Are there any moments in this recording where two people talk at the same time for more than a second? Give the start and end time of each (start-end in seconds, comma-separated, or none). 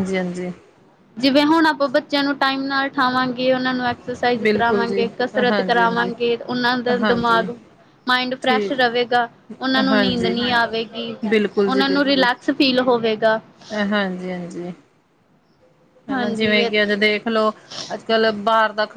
4.4-6.1